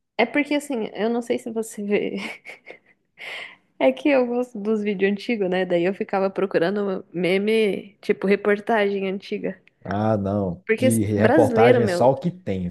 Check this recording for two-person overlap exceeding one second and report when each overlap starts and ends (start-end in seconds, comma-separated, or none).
10.7-12.1